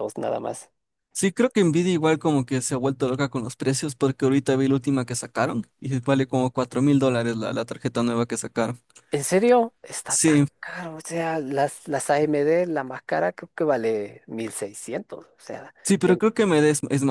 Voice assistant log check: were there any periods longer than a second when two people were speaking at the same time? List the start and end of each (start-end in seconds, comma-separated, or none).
none